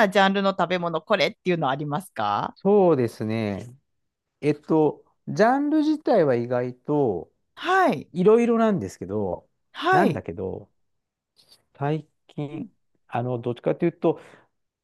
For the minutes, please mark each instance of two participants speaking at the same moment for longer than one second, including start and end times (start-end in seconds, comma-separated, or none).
none